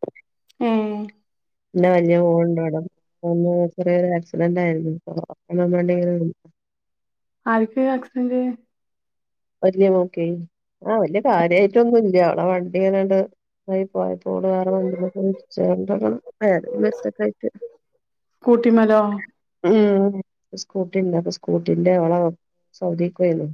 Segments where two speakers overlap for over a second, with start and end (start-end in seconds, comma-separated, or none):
none